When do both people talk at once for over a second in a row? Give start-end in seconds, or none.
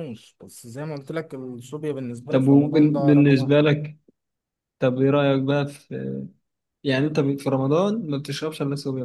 2.3-3.5